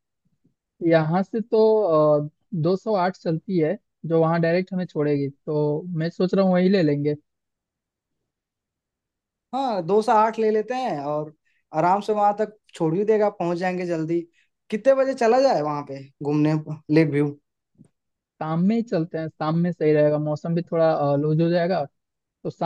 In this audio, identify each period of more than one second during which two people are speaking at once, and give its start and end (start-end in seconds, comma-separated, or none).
none